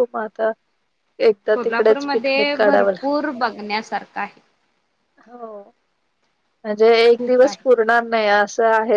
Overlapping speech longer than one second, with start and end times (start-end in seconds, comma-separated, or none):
1.5-2.9